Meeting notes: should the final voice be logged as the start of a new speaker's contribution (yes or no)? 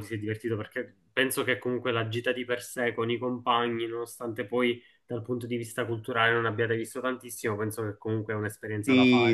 yes